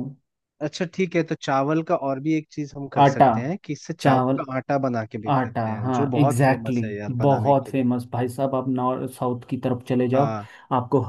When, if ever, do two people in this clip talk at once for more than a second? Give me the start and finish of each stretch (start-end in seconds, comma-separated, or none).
5.3-7.8